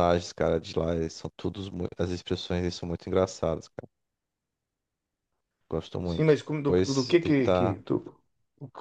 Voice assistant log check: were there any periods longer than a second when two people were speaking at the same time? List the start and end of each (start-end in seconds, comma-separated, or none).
6.0-7.8